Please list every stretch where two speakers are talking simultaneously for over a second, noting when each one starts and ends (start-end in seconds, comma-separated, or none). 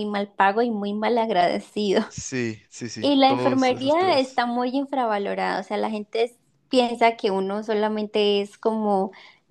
3.0-4.4